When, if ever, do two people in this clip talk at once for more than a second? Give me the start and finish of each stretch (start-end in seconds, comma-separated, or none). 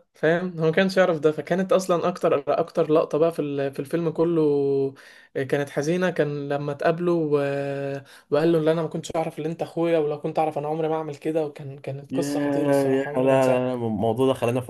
12.1-13.7